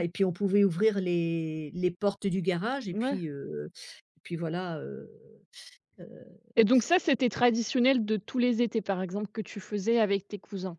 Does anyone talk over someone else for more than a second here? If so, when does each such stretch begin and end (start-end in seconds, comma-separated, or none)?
none